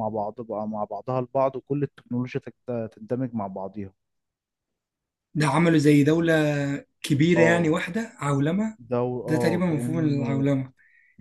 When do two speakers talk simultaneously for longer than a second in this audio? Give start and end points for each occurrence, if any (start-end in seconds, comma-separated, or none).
8.8-10.5